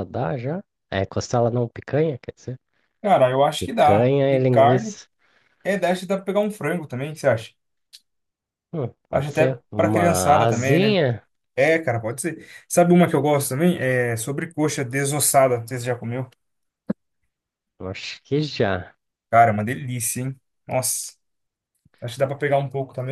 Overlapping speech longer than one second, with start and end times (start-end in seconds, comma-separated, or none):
3.6-5.0, 9.1-11.0